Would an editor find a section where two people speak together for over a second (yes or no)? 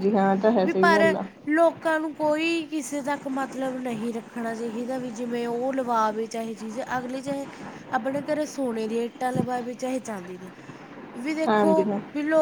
no